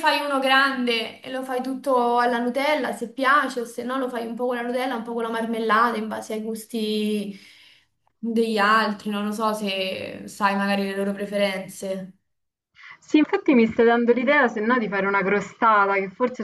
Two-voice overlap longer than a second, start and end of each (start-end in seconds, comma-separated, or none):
none